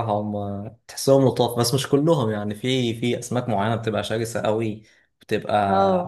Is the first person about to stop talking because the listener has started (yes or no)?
no